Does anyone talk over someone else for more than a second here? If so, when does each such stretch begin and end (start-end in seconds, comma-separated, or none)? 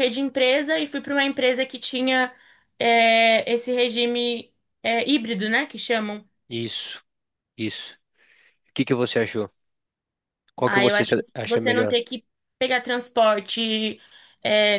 10.6-11.9